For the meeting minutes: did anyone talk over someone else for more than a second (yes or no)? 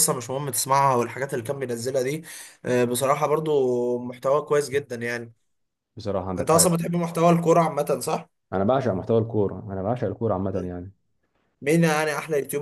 no